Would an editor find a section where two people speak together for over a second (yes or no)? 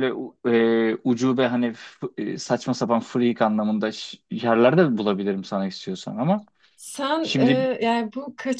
no